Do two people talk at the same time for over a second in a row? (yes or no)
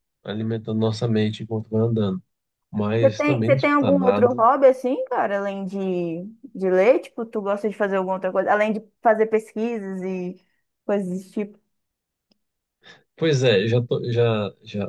yes